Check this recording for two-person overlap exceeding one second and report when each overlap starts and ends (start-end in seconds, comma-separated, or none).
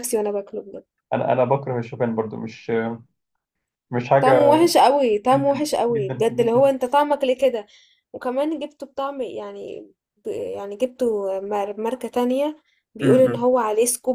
5.3-6.7